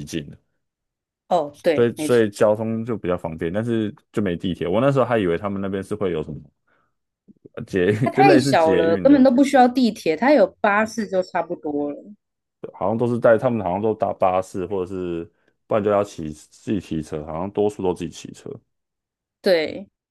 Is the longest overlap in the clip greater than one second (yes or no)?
yes